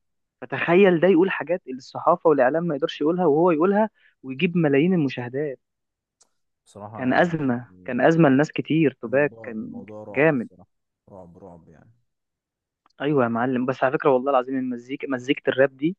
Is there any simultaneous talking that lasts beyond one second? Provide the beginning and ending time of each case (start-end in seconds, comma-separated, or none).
9.1-10.5